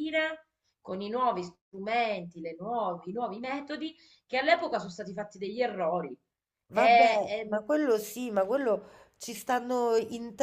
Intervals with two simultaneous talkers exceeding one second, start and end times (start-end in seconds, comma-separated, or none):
none